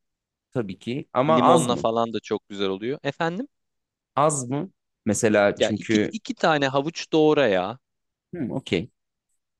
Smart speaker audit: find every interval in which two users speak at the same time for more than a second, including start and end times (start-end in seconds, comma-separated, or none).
none